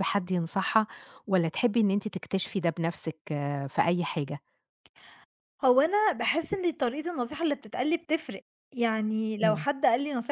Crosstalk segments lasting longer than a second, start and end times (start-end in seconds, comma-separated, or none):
none